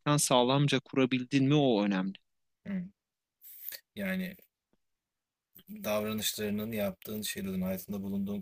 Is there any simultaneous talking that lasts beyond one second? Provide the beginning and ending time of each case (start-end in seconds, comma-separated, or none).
none